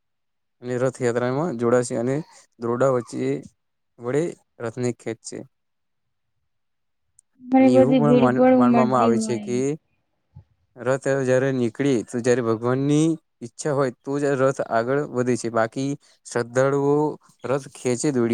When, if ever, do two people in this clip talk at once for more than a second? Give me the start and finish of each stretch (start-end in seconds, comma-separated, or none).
7.6-9.5